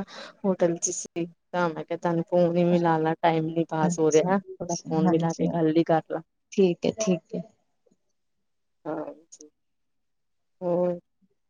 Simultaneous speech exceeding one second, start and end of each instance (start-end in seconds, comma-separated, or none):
3.9-5.5